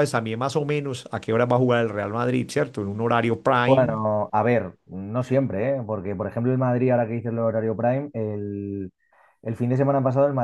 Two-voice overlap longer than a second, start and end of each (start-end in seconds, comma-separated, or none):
none